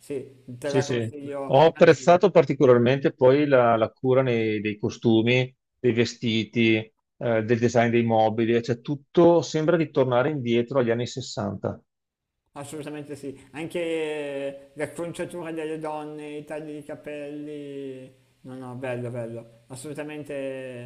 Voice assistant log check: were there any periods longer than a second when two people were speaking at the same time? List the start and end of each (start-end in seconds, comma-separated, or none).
0.6-2.2